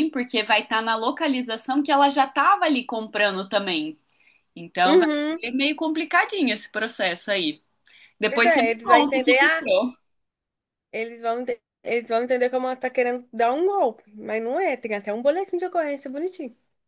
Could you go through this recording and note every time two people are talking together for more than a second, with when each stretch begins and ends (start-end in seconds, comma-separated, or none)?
8.2-9.7